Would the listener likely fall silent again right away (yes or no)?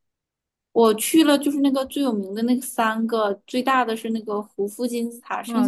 yes